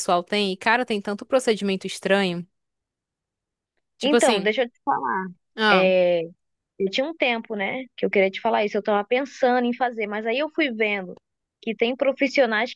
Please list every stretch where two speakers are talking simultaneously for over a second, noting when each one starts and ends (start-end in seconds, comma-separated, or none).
none